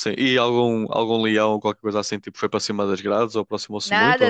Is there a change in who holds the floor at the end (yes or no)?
yes